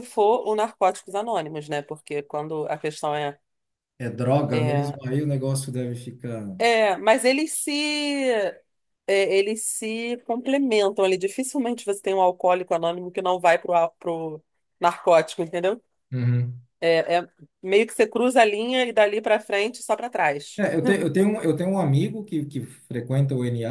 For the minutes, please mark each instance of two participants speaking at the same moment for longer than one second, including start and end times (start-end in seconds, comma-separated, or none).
none